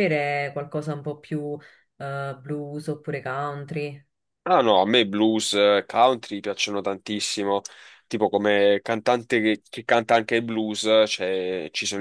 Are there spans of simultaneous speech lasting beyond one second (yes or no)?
no